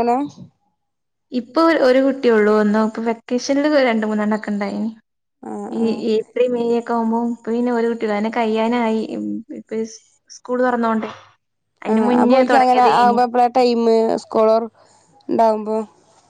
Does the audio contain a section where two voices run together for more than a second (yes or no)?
no